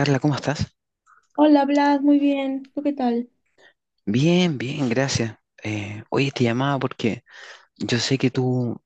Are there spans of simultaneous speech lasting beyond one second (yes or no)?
no